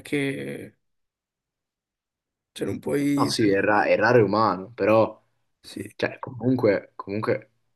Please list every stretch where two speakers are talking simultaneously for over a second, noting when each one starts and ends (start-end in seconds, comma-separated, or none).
none